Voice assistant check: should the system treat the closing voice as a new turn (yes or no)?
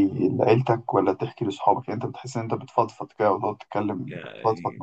yes